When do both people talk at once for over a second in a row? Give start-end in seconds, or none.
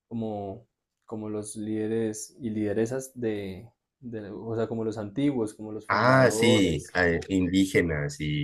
5.8-7.3